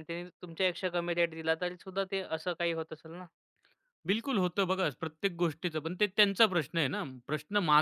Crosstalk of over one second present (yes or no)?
no